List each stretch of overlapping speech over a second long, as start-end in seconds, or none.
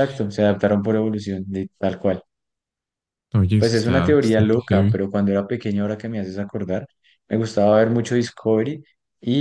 3.6-5.0